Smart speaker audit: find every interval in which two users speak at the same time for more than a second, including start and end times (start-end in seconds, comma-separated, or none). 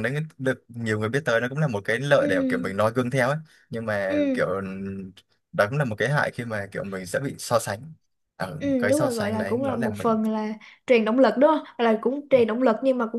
8.6-10.2